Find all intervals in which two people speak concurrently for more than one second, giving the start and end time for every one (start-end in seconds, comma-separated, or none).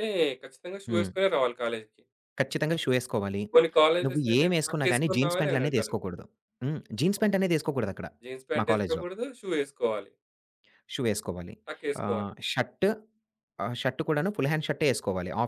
4.0-6.0